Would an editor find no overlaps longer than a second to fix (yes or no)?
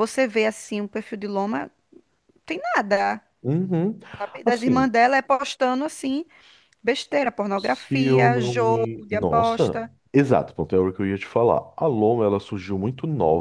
no